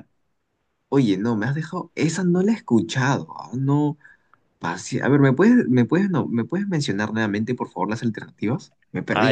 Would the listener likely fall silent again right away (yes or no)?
no